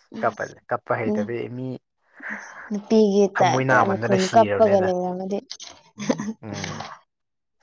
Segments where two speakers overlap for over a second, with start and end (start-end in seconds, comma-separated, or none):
3.4-4.9